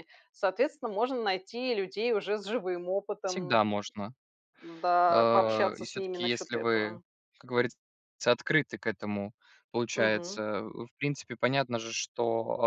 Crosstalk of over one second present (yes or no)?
yes